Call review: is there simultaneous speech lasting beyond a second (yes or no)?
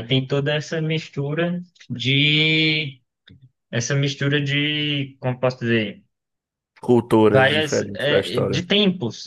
yes